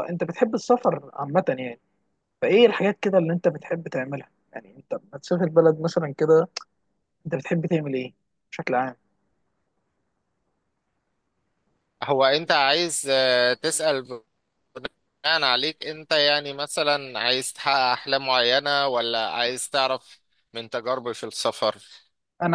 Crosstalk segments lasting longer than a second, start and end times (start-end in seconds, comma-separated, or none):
none